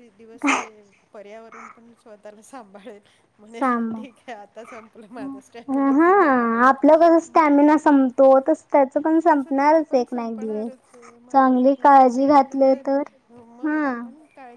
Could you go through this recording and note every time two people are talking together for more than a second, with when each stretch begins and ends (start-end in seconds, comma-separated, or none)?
9.3-10.7, 11.3-12.8